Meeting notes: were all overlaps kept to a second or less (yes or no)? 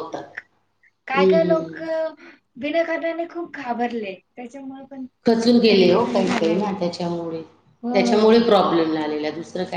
no